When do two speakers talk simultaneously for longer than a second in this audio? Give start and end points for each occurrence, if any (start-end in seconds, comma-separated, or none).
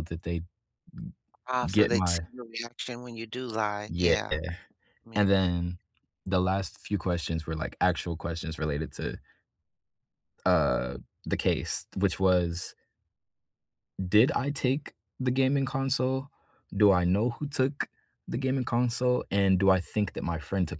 none